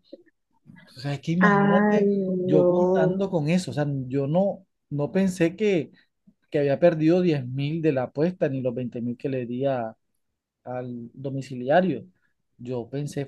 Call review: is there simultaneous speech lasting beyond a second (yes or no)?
yes